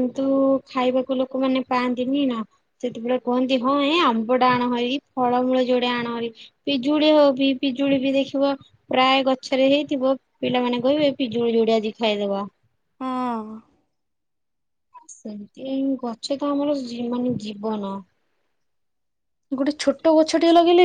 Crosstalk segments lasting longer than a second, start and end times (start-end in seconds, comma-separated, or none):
none